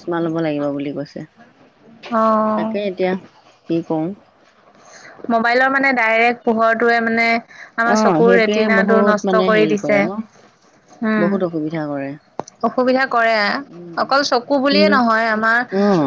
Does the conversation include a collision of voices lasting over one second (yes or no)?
yes